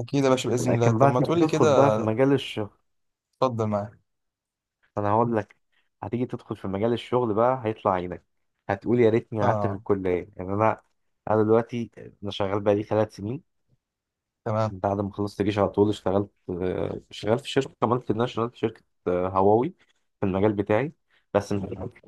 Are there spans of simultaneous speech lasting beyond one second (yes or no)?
yes